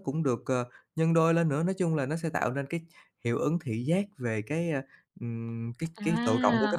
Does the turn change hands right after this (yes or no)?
yes